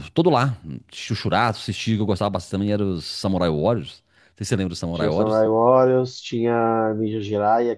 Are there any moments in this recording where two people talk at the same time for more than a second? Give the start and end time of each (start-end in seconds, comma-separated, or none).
none